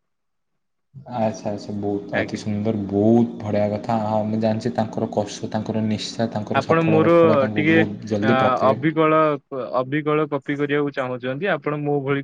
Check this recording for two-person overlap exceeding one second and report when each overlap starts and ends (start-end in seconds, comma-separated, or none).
none